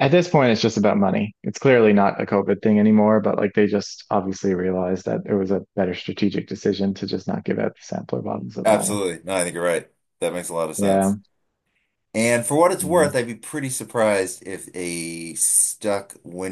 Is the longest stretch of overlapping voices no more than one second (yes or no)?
yes